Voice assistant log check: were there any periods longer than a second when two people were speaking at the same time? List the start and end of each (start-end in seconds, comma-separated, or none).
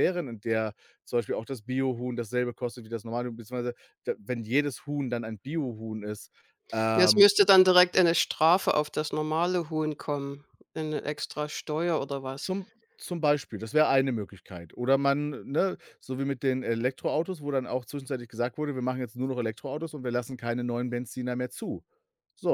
none